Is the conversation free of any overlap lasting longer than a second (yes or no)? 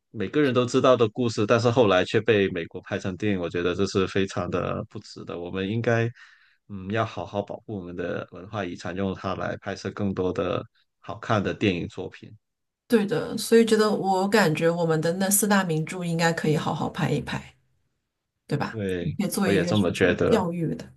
no